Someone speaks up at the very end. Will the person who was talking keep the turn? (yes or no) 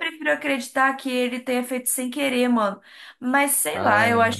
yes